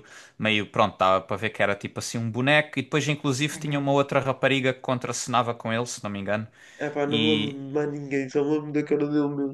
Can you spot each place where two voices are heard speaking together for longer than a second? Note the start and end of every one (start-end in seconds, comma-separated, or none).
none